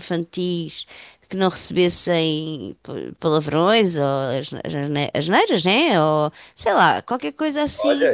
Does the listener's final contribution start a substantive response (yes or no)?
yes